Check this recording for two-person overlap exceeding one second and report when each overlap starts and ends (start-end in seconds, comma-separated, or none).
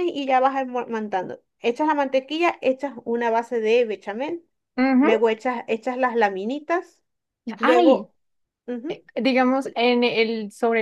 none